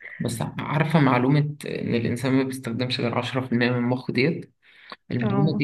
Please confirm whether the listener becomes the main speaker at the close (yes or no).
no